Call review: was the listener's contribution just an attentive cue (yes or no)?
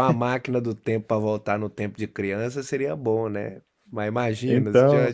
yes